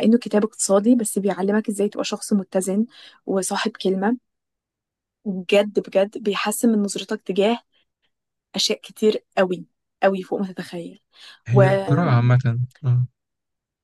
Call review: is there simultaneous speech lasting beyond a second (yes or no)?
no